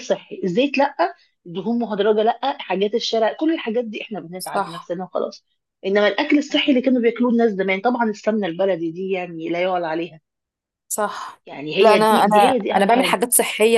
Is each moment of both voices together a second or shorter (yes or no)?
no